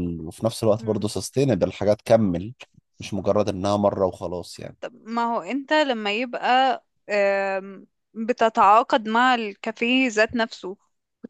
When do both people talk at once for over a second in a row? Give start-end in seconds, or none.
none